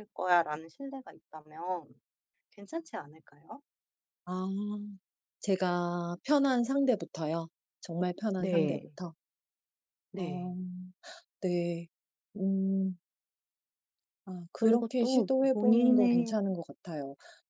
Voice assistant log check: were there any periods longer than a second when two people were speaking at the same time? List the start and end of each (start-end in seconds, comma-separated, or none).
14.5-16.4